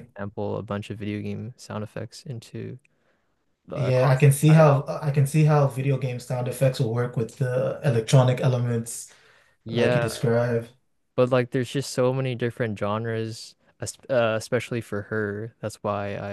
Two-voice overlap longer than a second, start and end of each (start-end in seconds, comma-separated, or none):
3.7-5.0